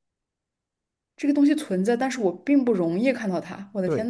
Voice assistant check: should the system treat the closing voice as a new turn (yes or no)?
yes